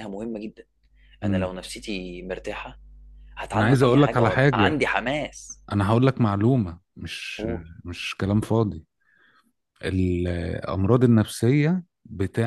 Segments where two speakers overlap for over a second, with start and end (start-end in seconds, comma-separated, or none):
3.5-4.8